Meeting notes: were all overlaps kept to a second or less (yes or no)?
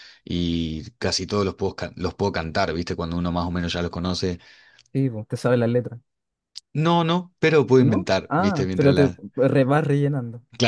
no